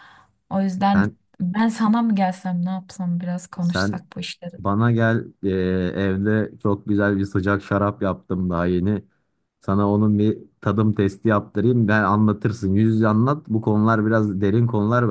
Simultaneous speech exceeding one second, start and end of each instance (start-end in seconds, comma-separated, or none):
none